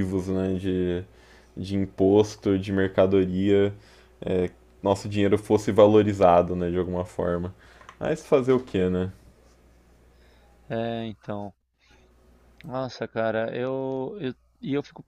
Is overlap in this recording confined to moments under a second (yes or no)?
yes